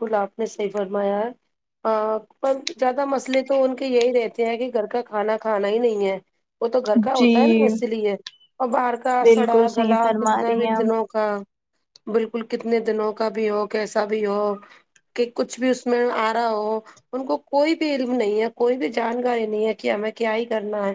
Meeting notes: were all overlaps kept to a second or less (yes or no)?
no